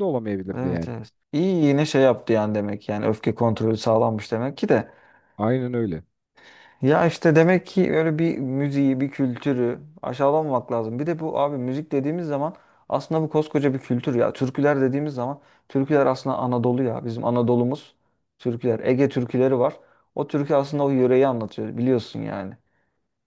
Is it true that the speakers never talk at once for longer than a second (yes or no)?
yes